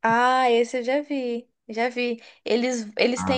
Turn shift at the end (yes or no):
no